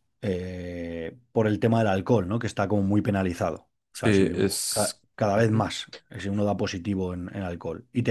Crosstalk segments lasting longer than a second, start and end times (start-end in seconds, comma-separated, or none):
3.9-5.6